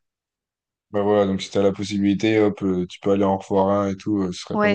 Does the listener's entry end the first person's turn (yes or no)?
yes